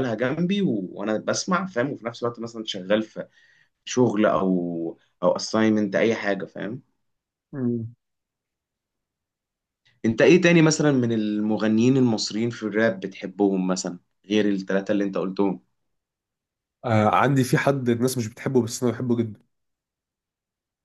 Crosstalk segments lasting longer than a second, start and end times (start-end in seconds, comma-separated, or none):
none